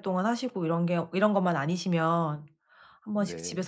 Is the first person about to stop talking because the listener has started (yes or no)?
no